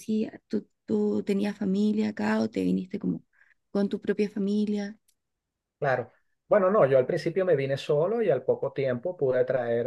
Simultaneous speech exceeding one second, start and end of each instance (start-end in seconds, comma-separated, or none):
none